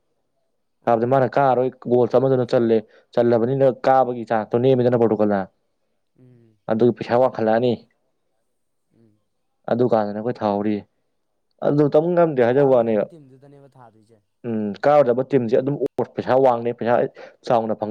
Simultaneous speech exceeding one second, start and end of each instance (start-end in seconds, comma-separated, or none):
none